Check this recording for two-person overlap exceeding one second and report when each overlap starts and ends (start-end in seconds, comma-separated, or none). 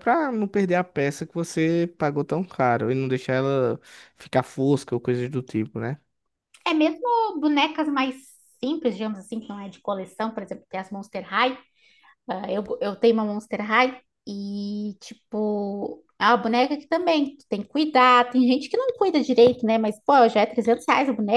none